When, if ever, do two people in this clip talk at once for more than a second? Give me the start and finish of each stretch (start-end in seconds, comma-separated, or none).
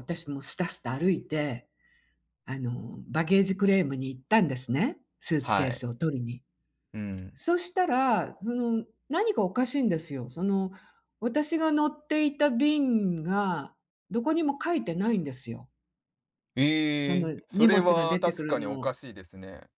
17.0-18.9